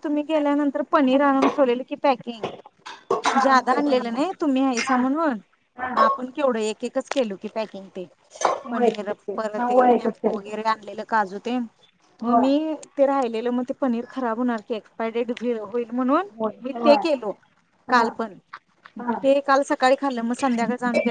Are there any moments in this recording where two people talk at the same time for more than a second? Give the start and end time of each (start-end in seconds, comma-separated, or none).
8.4-10.5